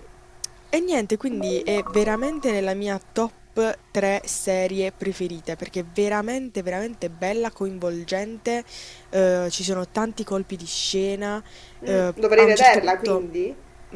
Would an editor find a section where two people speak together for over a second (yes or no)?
yes